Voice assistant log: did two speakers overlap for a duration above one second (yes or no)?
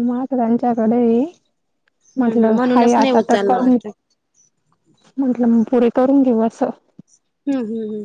yes